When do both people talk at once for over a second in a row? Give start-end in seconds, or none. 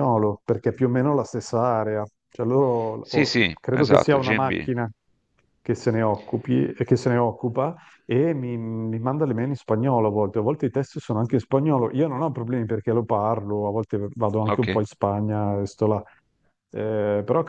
3.0-4.7